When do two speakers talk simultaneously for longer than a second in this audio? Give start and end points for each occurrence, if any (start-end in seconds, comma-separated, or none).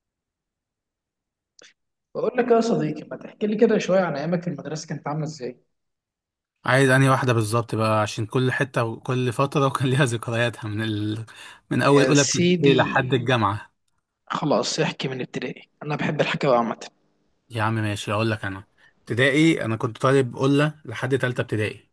11.8-13.0